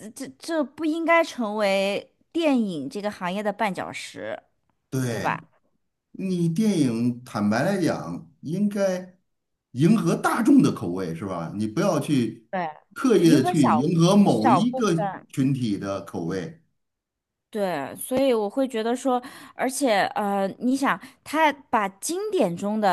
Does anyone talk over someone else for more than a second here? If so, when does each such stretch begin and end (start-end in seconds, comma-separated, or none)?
13.2-14.9